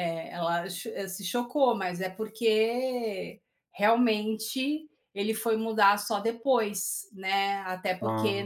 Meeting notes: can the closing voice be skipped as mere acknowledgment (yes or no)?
yes